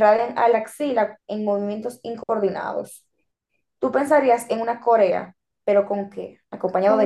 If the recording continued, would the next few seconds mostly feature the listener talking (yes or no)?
yes